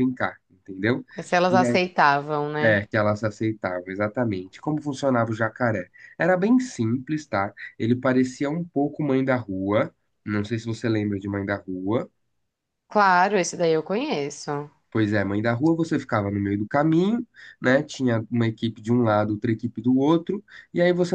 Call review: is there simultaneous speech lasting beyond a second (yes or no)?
no